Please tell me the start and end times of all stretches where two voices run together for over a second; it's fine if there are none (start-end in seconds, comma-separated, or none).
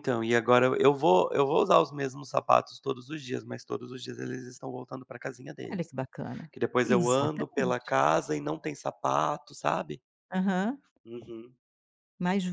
6.5-8.0